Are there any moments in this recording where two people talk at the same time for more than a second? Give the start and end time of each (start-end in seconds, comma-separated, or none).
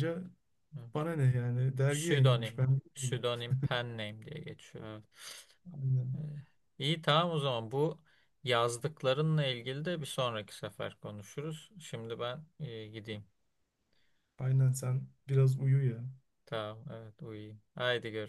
1.9-3.2